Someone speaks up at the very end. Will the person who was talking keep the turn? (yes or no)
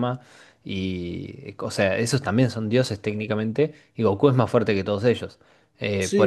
yes